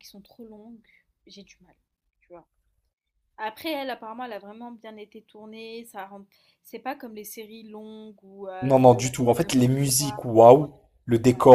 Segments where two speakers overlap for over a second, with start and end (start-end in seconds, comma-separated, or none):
8.6-10.2